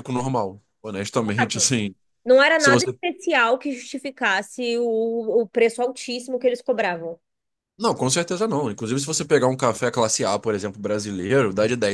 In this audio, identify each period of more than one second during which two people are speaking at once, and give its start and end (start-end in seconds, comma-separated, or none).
none